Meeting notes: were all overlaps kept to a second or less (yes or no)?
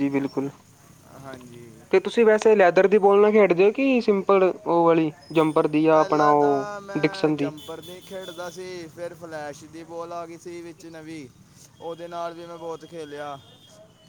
no